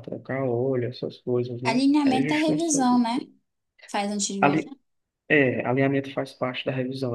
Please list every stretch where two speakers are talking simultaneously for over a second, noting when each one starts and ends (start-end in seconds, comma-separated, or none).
1.6-3.0